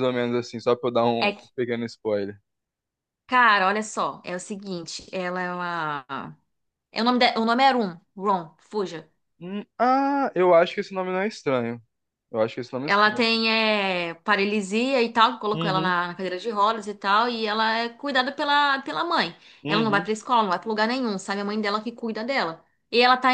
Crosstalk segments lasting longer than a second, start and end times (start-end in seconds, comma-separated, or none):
none